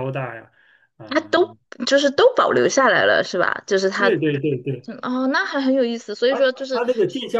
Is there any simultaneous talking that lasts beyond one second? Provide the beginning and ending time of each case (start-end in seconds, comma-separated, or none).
none